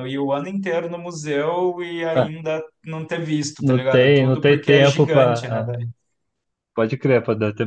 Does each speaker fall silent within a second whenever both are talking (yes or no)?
no